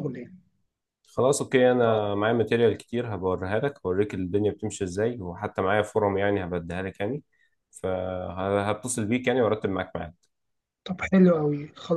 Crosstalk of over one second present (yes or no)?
no